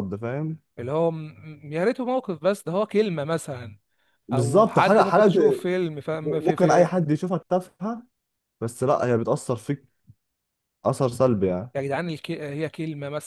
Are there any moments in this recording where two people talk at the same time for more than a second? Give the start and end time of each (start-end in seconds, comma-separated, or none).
4.3-5.7